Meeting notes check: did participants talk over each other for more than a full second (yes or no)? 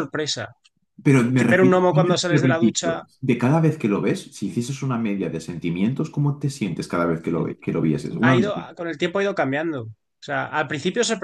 yes